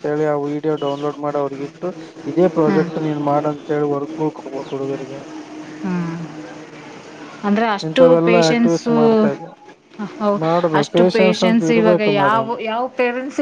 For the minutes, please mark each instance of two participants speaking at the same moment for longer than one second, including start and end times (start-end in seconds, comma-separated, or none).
10.8-12.5